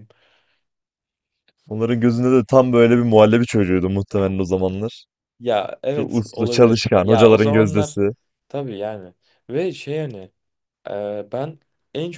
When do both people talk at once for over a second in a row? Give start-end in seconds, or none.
5.9-8.0